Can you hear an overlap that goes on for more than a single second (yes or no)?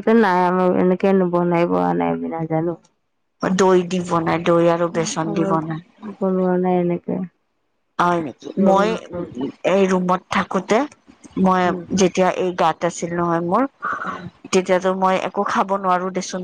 no